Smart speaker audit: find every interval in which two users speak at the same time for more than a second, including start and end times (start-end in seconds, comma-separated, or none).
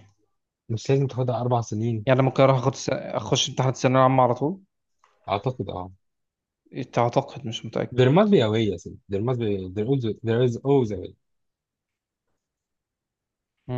none